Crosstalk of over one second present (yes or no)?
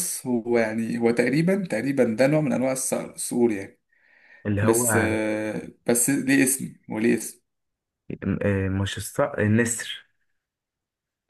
no